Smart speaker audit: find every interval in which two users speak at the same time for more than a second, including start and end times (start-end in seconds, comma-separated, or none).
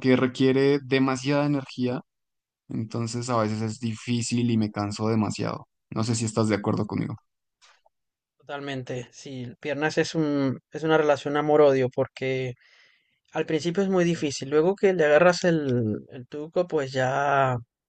none